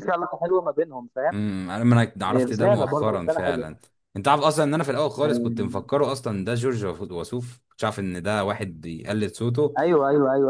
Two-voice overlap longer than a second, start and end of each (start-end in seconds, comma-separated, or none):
2.3-3.8